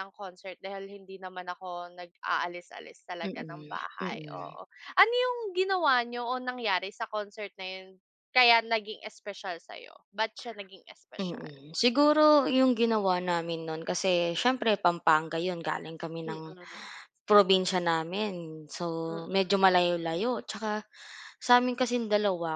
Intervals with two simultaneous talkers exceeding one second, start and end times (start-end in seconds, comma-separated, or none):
3.2-4.6